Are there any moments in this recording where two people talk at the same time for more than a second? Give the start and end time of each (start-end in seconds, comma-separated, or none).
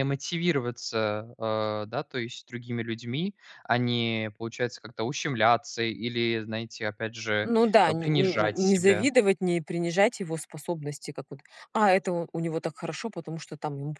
7.4-9.1